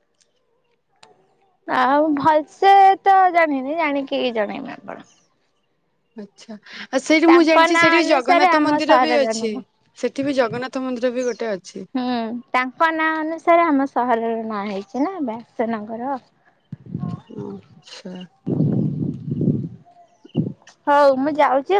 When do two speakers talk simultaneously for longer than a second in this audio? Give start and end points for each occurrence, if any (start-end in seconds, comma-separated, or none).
7.3-9.5